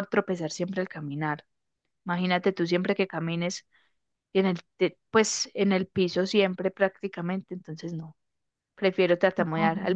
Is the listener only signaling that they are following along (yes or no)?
yes